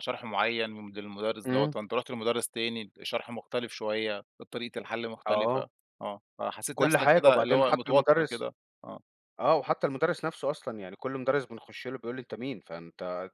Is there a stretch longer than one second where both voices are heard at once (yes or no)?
yes